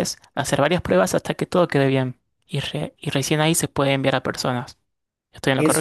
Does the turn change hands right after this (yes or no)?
yes